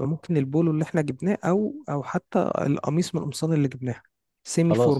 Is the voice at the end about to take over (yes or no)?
yes